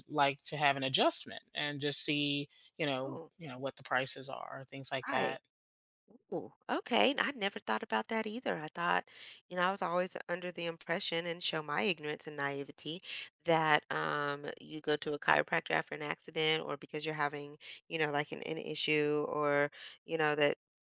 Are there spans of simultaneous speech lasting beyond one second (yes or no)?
no